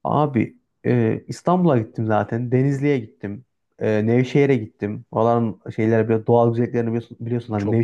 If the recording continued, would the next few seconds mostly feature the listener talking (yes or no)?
no